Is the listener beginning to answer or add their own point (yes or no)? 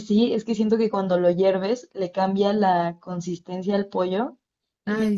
no